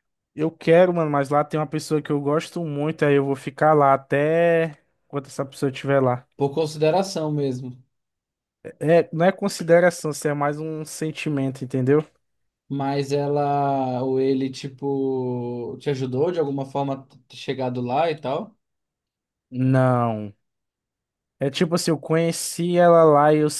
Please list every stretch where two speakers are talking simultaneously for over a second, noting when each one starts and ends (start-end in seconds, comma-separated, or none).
none